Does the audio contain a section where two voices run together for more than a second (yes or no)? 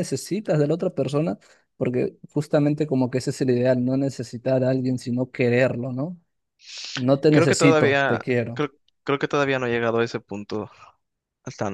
yes